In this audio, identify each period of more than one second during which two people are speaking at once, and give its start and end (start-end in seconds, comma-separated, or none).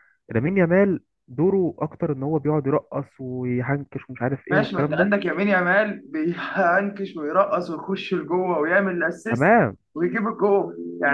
none